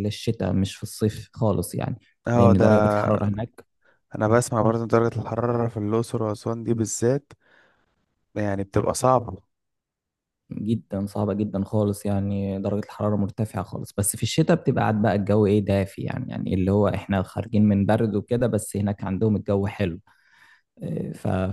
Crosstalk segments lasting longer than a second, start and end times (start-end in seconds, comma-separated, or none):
none